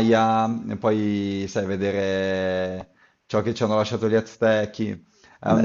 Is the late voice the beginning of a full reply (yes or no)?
no